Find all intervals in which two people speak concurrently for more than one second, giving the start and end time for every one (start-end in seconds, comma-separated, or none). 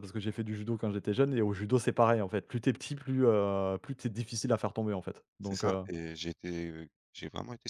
none